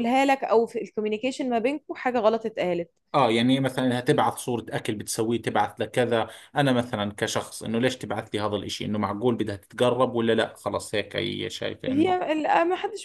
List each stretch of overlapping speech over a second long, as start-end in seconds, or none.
none